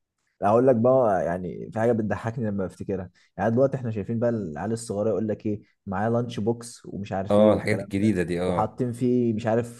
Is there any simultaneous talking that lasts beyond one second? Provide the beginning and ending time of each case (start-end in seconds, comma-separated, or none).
7.3-8.8